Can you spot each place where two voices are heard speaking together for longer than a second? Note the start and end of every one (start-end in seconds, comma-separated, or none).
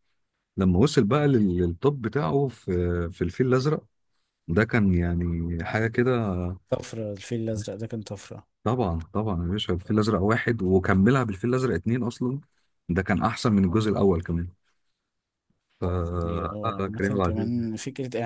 16.2-17.6